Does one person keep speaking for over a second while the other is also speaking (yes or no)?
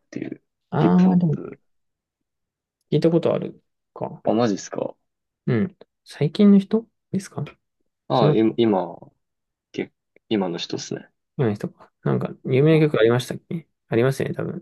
no